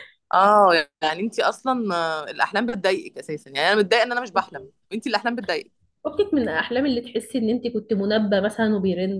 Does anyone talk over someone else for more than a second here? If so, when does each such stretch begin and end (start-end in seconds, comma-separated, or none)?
none